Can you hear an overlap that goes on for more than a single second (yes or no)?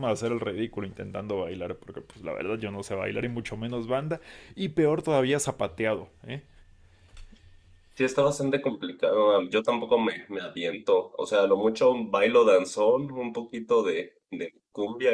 no